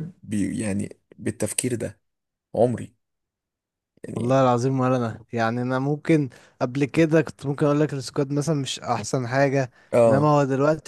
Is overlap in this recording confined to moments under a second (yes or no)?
yes